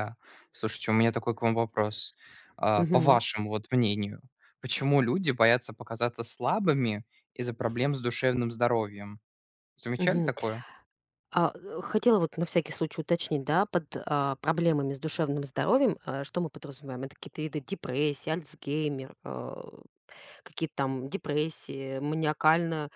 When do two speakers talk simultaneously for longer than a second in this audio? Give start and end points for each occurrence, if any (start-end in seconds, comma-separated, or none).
none